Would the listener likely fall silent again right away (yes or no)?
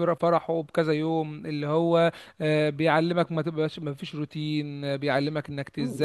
no